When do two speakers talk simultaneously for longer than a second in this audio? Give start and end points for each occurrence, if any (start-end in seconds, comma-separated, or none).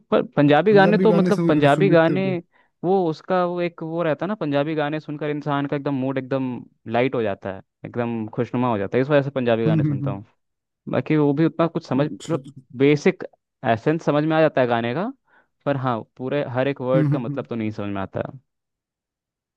0.7-2.2